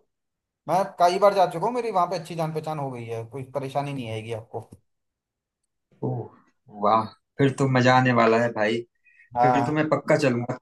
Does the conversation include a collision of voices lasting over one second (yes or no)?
no